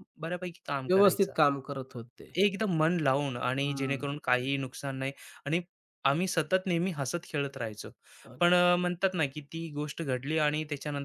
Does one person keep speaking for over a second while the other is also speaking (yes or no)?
no